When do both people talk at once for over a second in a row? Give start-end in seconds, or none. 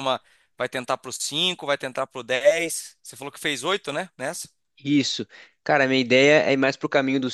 none